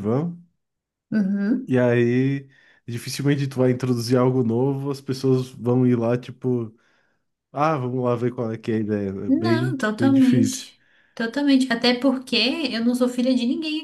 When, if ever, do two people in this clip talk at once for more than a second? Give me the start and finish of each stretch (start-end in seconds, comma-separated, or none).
9.3-10.7